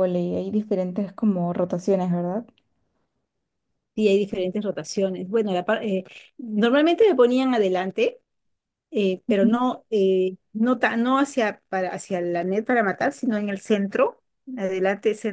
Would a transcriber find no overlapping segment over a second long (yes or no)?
yes